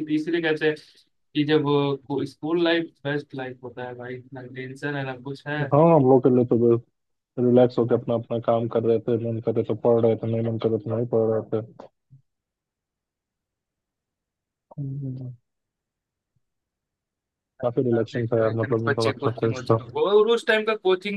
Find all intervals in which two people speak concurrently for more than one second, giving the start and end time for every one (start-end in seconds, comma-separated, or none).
17.9-19.8